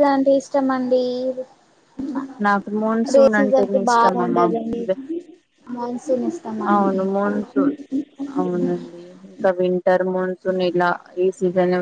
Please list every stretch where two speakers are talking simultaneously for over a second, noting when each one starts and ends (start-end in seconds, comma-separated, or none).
3.2-4.5